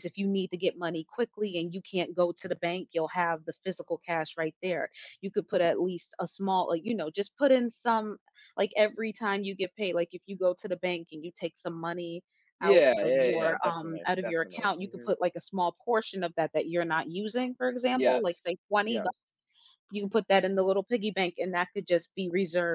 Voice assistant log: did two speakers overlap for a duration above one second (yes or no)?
yes